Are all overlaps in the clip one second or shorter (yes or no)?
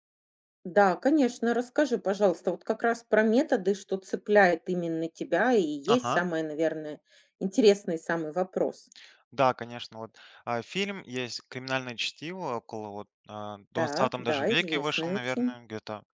no